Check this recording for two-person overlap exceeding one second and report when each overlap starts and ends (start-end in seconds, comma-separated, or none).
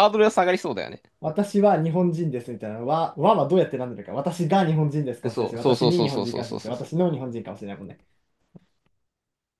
5.2-6.9